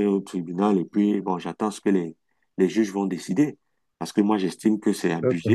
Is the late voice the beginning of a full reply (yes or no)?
no